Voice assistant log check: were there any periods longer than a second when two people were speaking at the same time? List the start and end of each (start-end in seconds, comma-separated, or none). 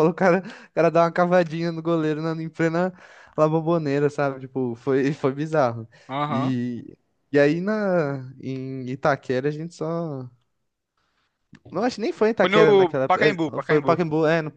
12.4-14.0